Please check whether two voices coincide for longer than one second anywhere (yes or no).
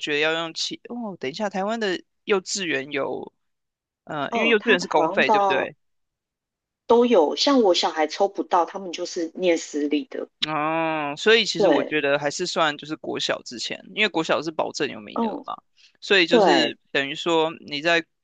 yes